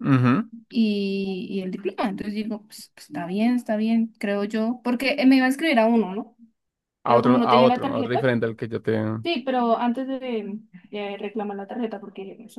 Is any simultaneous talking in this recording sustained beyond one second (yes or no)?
yes